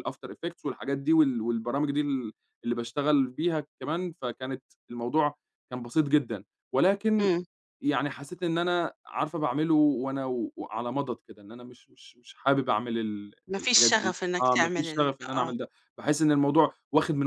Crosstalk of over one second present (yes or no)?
yes